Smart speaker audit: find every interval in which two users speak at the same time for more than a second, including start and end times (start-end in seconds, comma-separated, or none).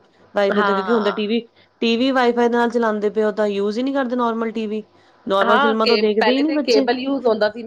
5.5-6.8